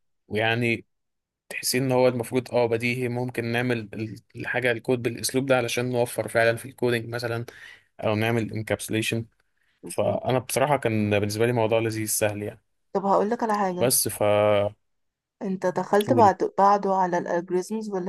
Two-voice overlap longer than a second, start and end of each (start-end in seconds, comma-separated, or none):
none